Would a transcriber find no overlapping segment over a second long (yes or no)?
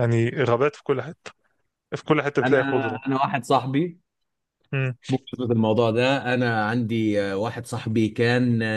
yes